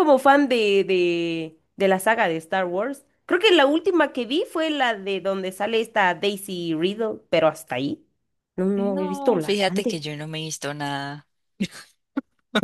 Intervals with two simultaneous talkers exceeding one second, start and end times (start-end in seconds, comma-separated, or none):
8.8-10.0